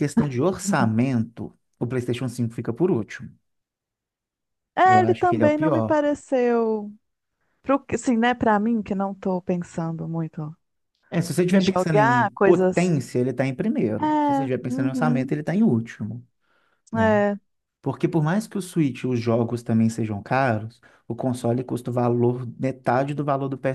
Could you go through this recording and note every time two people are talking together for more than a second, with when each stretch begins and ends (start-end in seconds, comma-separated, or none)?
4.8-6.2, 11.5-12.9, 14.0-15.3